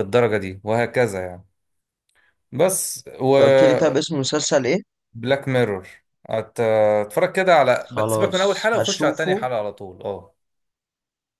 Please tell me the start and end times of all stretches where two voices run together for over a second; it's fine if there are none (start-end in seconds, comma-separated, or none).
7.9-9.3